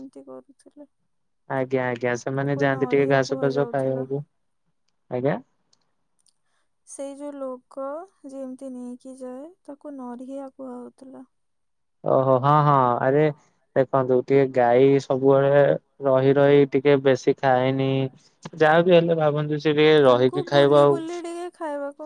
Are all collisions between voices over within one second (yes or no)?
no